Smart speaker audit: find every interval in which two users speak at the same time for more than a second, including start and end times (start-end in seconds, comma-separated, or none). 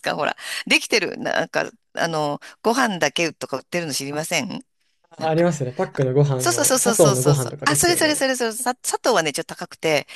6.4-8.2